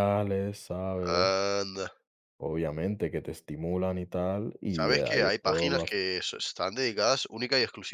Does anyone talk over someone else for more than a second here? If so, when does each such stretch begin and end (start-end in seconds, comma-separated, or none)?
4.7-5.9